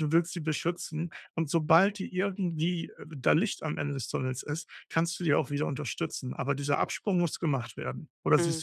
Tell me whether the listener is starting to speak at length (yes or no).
yes